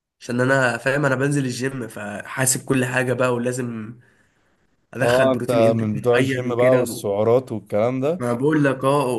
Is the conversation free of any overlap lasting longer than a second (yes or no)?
no